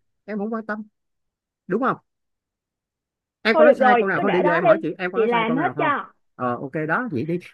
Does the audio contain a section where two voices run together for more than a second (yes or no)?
yes